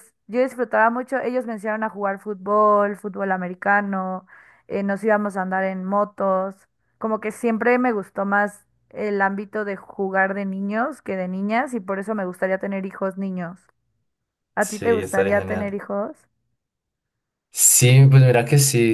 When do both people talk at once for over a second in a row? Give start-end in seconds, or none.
14.6-15.8